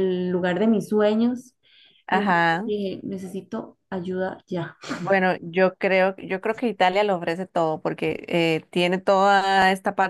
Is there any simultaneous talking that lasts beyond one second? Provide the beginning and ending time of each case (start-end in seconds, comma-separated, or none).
none